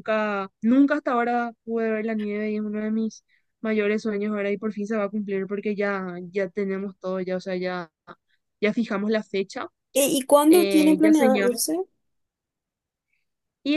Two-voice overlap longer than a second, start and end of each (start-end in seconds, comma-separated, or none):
10.5-11.7